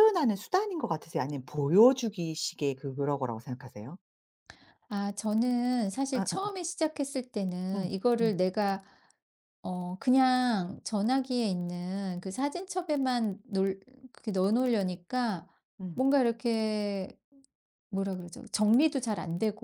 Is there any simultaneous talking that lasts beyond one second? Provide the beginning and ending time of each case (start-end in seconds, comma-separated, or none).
none